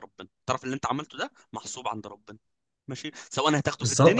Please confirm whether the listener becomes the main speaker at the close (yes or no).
yes